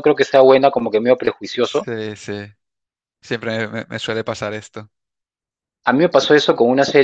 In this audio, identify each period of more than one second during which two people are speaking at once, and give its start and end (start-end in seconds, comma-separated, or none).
none